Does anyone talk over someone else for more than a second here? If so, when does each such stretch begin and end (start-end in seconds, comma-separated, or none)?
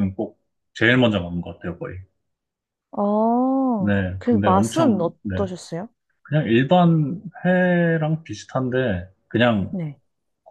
3.8-5.4